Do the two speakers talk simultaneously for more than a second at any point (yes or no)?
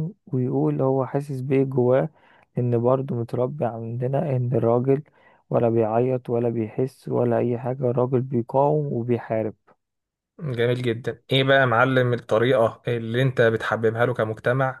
no